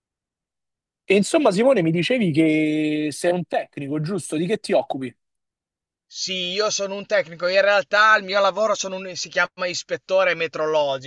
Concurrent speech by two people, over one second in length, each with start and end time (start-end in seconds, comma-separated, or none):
none